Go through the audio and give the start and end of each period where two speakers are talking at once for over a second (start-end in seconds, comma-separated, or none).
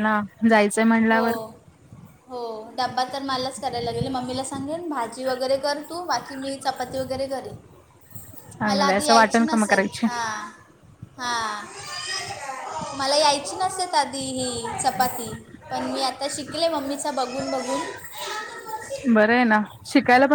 8.7-10.1